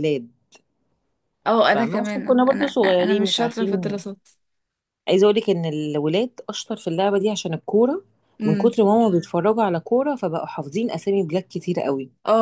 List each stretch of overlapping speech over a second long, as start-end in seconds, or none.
1.6-4.0